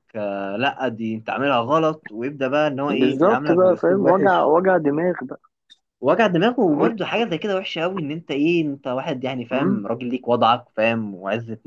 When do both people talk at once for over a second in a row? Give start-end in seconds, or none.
2.9-4.5